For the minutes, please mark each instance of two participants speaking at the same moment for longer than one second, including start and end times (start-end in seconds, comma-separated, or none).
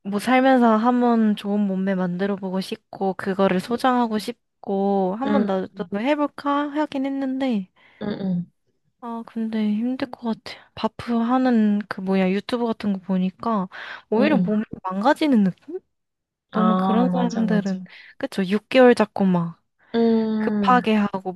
16.5-17.8